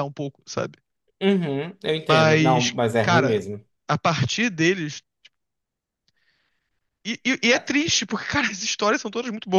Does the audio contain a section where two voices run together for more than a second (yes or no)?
yes